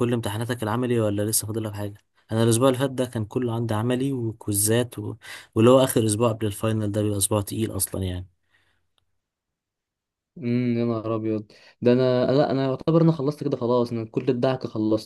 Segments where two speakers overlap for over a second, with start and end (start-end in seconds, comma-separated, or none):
none